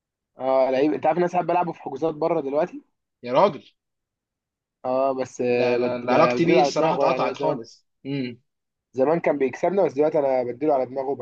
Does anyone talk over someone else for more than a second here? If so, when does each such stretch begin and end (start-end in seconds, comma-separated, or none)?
5.5-7.6